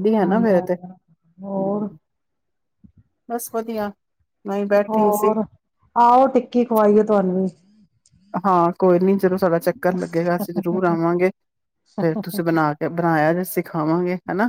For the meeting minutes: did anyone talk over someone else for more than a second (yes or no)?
no